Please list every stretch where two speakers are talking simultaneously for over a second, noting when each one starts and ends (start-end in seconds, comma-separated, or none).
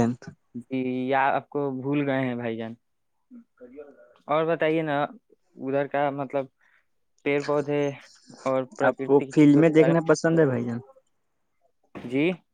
8.9-10.5